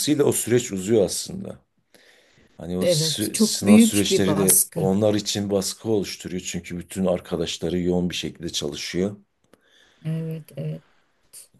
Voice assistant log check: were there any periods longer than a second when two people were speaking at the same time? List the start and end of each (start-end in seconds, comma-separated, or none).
2.8-4.8